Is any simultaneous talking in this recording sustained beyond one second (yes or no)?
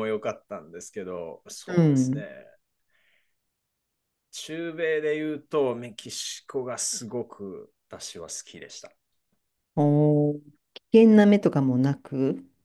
no